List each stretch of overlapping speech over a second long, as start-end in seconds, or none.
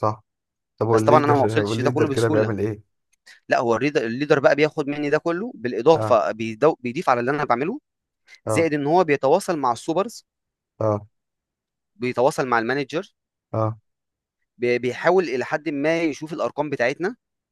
0.9-2.5